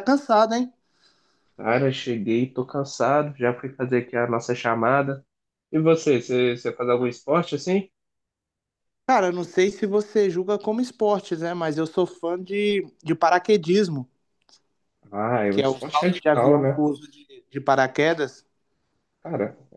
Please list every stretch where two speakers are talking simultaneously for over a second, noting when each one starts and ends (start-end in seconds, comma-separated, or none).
15.5-16.8